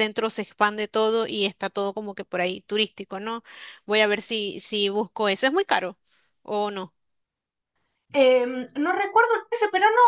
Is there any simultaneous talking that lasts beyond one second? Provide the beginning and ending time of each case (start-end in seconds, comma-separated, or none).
none